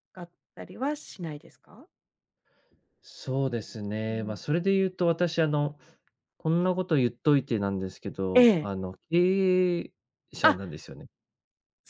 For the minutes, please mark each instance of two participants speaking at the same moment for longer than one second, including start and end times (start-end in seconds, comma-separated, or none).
none